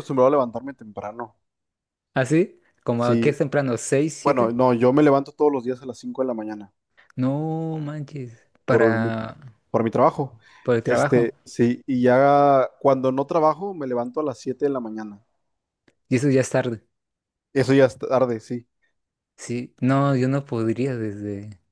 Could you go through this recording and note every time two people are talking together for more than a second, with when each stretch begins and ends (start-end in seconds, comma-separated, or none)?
none